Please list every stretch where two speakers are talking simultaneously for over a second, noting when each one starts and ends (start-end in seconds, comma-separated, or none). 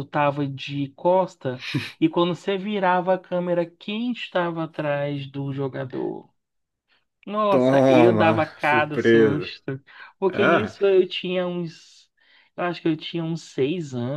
7.5-9.5